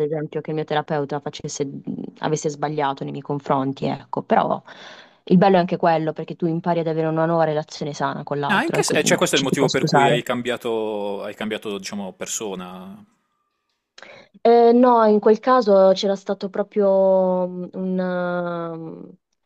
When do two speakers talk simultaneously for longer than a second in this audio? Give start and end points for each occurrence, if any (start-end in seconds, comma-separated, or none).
8.5-10.2